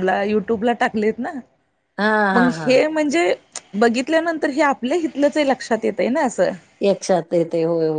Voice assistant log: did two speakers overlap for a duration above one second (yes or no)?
no